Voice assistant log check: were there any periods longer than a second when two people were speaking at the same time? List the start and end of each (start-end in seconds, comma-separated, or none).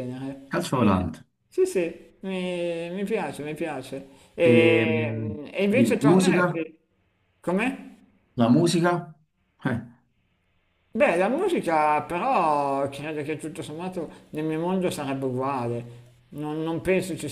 4.4-6.4